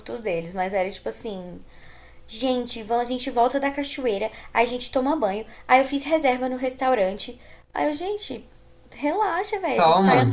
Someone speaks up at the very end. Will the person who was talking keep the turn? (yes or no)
yes